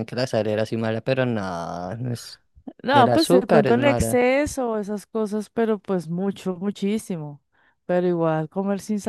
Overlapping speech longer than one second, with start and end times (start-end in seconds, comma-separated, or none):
2.9-4.2